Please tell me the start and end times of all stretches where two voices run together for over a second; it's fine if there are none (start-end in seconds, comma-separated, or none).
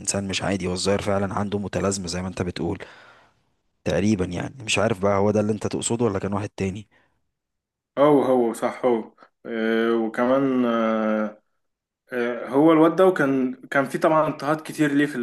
none